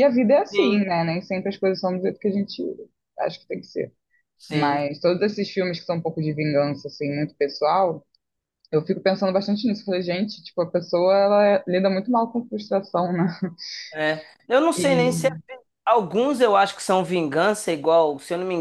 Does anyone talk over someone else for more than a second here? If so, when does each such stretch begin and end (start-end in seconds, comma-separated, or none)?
none